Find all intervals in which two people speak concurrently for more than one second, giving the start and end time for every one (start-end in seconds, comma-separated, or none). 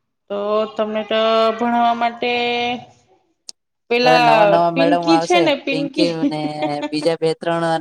4.0-6.1